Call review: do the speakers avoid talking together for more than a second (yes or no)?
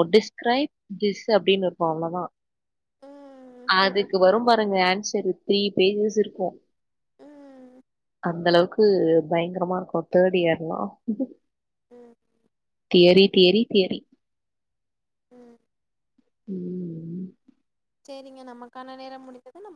yes